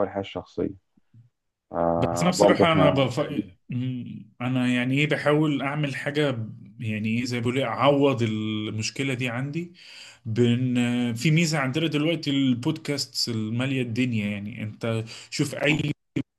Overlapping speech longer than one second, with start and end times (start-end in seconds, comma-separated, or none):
2.0-3.2